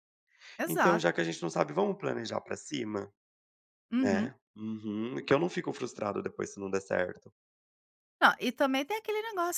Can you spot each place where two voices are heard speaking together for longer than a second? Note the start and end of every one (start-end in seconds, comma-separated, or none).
none